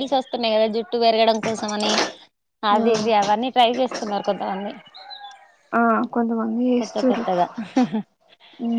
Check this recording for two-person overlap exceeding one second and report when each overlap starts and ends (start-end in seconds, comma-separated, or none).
none